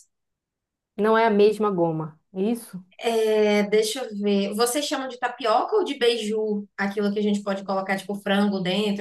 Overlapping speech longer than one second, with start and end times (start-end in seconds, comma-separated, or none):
none